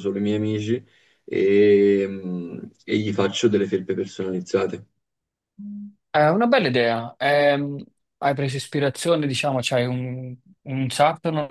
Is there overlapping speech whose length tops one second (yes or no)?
no